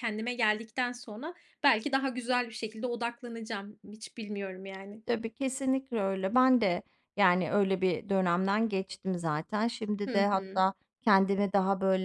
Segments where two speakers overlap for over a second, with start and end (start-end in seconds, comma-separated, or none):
none